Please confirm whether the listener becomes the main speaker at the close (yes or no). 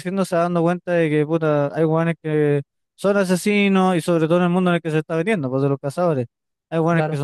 no